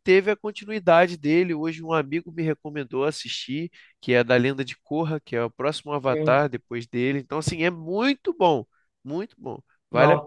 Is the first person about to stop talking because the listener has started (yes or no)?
yes